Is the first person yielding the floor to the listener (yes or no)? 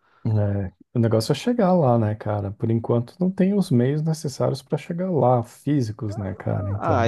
yes